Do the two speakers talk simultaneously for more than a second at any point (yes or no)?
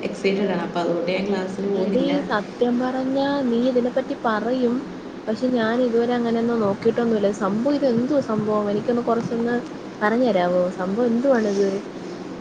no